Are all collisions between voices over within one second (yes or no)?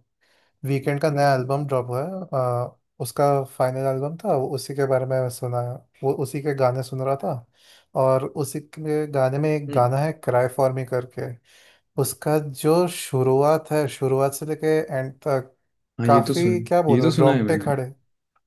no